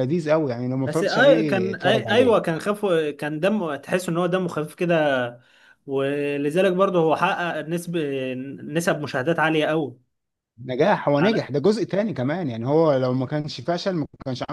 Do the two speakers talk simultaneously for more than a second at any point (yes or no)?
yes